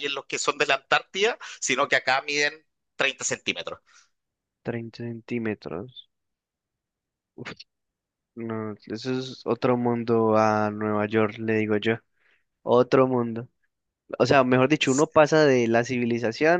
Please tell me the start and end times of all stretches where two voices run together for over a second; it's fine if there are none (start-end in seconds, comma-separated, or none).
none